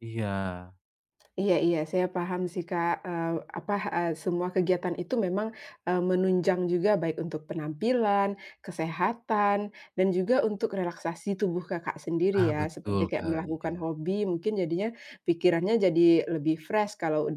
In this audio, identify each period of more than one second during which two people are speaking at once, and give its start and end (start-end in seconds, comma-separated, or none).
12.4-13.8